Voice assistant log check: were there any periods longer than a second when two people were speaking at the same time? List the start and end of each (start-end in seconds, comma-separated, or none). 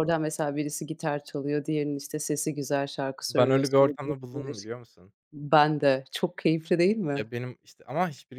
3.3-4.7